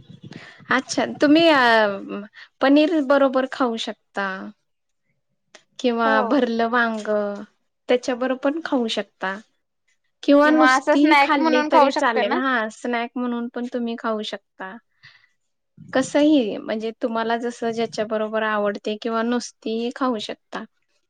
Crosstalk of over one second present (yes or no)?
yes